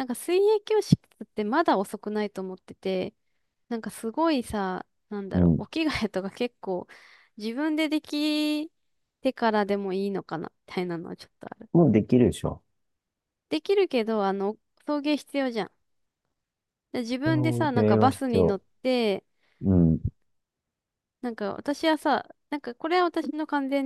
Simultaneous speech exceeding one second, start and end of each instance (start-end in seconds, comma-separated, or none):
17.2-18.6